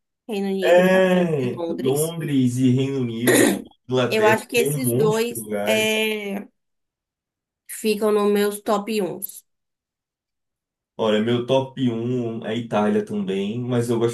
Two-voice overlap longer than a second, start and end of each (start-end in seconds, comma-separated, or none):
0.6-2.2, 4.1-5.9